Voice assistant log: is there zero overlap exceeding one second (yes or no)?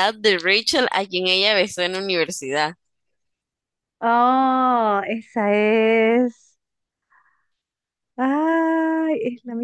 yes